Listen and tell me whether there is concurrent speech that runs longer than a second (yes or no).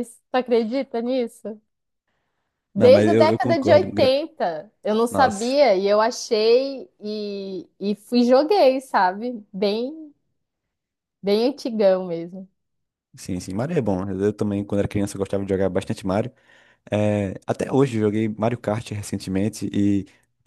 yes